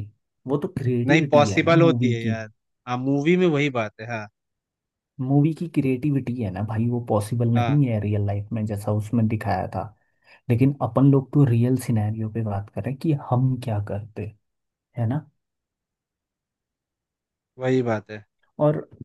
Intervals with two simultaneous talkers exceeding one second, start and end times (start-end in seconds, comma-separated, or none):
1.1-2.4